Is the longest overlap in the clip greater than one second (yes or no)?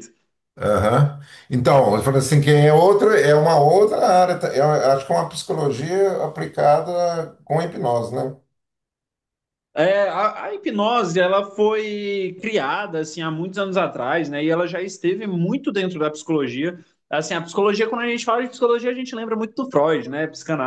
no